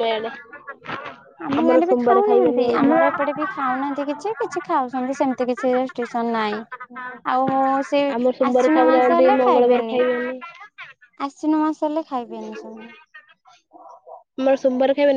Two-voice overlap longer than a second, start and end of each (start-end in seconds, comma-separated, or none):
8.2-9.8